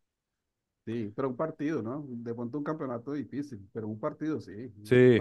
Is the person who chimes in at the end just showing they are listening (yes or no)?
no